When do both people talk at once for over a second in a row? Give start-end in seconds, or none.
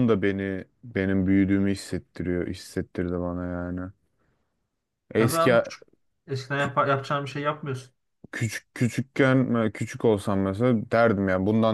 none